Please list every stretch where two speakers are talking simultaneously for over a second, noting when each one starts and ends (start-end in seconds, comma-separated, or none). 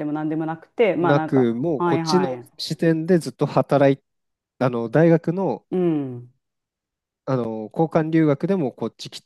1.0-2.5